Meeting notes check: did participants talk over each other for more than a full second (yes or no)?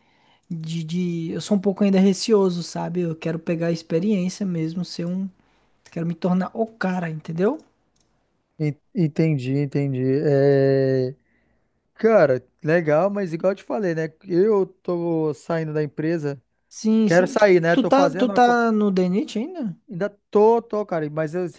yes